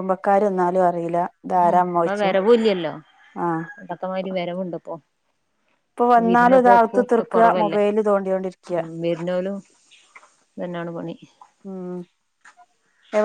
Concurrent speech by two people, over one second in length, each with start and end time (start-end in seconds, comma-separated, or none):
6.2-7.8